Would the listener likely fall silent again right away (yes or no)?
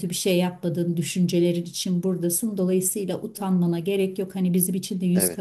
yes